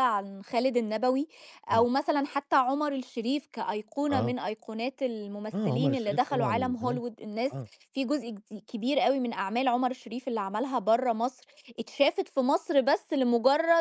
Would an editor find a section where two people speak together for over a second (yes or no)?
yes